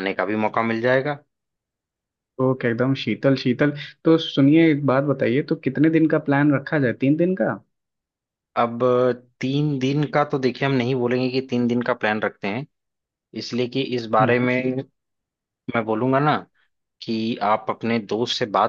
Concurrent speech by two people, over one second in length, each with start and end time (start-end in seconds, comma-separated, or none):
none